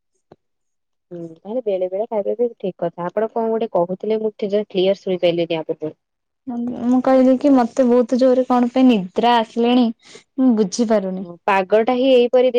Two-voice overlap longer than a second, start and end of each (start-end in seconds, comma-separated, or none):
none